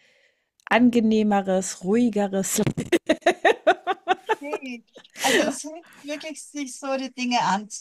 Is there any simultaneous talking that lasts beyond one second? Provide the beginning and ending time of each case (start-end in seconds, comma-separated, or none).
none